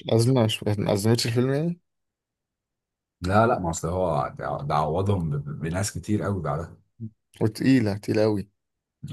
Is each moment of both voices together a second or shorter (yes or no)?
yes